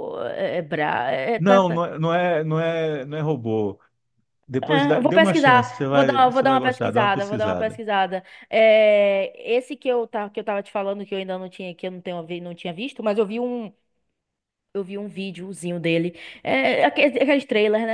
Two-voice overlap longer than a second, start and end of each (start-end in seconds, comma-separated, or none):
4.6-7.8